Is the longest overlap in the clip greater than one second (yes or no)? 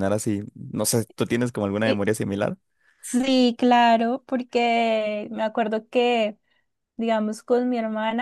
no